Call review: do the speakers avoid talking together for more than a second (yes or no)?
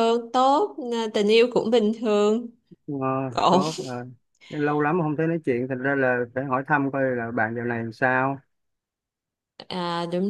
yes